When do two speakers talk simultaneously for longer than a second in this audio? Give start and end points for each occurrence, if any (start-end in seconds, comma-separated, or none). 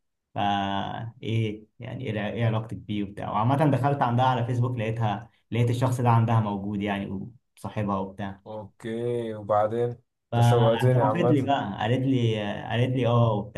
10.3-11.5